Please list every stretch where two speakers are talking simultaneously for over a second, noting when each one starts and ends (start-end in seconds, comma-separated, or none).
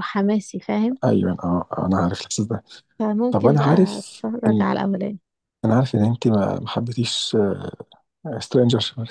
3.3-4.6